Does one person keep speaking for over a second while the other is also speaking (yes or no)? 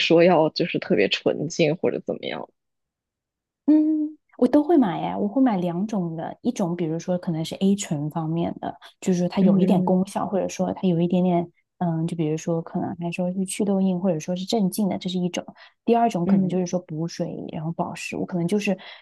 no